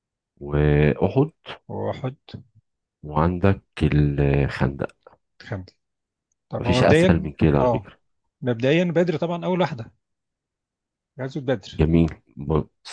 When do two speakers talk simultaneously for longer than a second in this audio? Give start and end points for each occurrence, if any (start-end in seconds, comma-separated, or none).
6.6-7.9